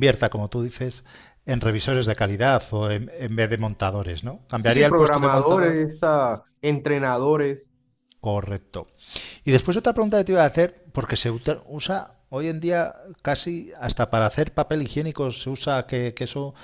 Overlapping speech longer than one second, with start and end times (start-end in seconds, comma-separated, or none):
4.5-5.8